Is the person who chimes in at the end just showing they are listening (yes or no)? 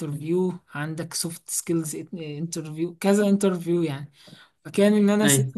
yes